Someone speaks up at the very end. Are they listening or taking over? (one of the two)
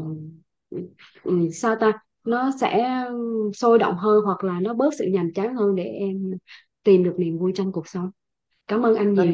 taking over